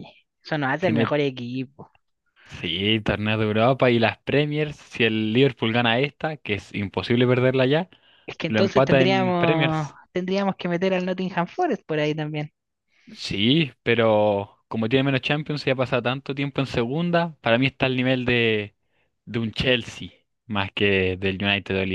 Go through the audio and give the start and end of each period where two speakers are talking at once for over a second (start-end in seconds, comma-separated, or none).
8.5-10.0